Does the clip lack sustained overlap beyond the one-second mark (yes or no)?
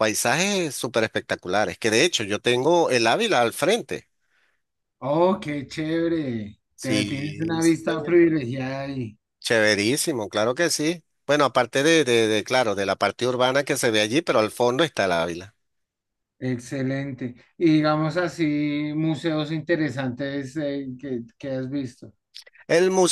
no